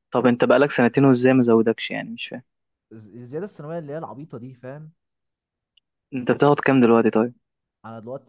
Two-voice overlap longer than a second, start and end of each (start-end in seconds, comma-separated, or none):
none